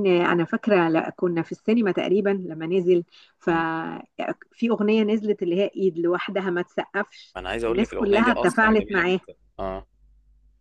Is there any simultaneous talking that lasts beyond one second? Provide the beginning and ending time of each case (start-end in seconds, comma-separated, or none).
7.4-9.2